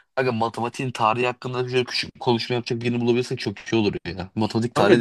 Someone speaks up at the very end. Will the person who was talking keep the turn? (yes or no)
no